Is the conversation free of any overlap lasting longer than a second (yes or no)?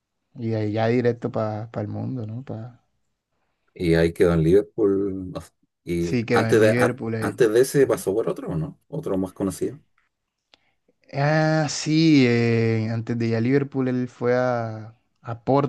no